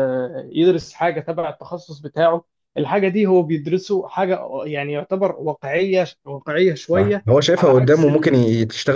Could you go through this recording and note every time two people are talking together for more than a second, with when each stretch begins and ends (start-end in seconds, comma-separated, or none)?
6.9-8.4